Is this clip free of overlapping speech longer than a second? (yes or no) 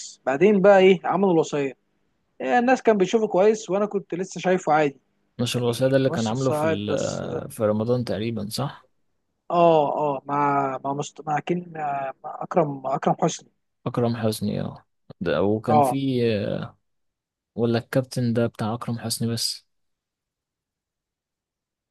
no